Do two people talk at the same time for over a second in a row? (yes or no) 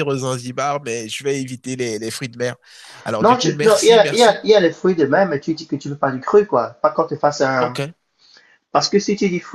yes